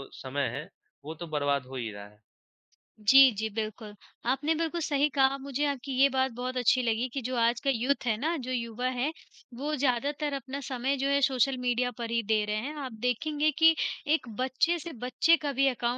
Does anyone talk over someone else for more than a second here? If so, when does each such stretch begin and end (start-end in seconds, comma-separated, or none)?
none